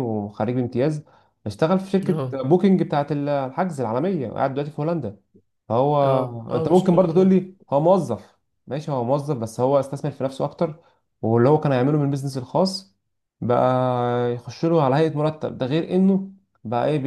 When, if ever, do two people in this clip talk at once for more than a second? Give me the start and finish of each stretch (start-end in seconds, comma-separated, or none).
6.0-7.4